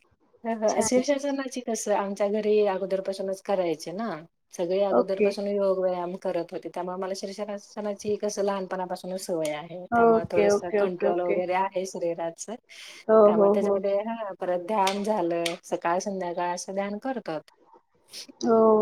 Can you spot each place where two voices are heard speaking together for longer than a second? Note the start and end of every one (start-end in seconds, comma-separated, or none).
10.0-11.3